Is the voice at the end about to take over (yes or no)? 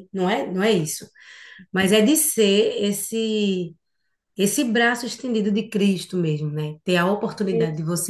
no